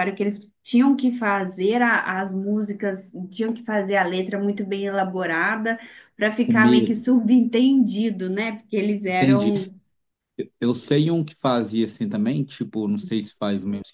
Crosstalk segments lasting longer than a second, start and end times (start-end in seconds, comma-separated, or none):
none